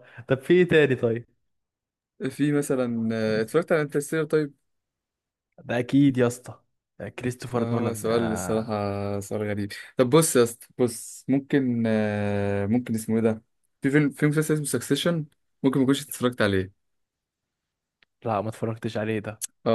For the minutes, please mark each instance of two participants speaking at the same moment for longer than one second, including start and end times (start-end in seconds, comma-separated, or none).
7.5-8.8